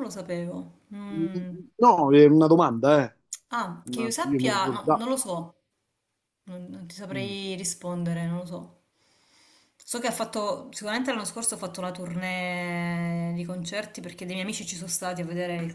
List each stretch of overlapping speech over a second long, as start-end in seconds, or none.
3.8-5.1